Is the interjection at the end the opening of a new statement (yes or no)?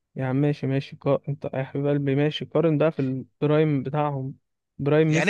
yes